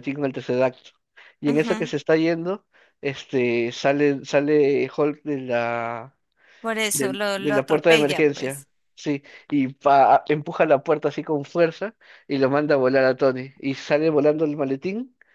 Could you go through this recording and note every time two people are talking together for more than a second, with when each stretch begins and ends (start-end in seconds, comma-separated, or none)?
6.9-8.7